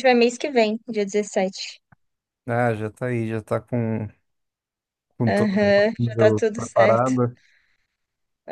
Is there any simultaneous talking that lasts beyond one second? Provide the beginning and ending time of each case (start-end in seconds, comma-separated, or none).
5.3-7.1